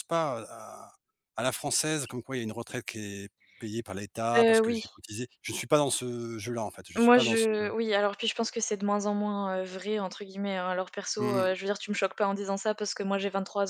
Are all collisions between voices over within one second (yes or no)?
yes